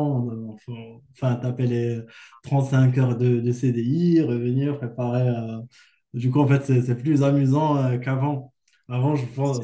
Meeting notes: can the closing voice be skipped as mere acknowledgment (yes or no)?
yes